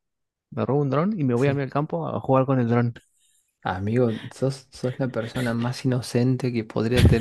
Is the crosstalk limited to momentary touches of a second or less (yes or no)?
yes